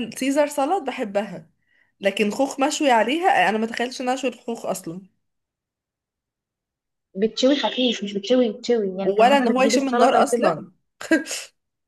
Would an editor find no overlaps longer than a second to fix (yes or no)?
no